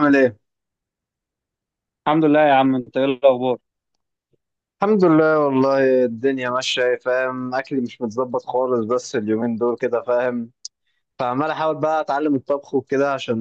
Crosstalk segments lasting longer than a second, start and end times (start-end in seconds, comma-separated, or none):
none